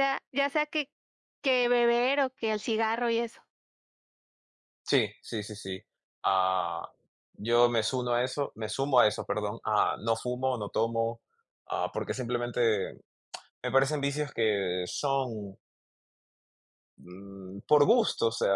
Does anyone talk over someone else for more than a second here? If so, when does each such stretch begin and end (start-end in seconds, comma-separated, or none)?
none